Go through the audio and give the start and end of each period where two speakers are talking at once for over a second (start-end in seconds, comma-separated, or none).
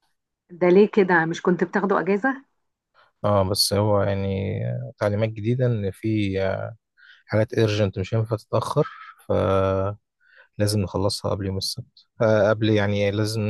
none